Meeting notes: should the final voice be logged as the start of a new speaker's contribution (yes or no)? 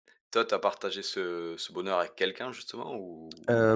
yes